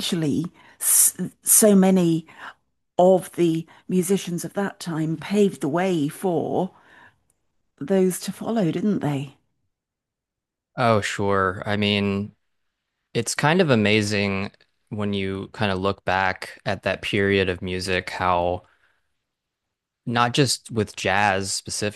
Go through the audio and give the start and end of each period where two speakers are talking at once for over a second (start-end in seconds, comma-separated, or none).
none